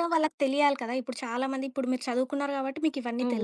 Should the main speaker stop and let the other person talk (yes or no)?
no